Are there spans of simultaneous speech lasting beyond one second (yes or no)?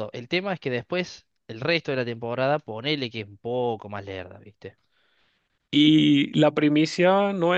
no